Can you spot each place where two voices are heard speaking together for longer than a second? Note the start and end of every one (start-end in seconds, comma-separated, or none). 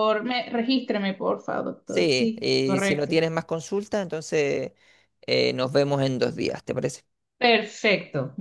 1.9-3.2